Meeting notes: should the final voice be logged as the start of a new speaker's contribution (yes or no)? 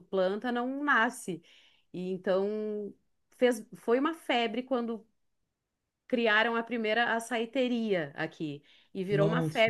no